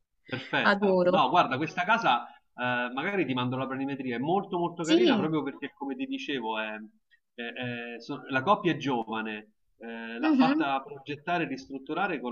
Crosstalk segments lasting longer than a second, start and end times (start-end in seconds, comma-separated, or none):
none